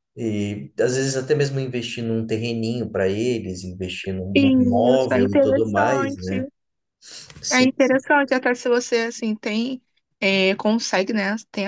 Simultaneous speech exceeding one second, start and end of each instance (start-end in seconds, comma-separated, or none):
4.3-6.3